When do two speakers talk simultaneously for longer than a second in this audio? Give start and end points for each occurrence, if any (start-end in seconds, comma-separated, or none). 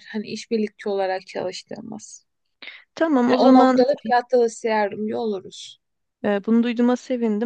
none